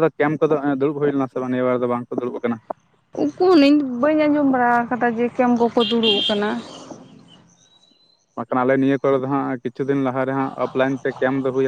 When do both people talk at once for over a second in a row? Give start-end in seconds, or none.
none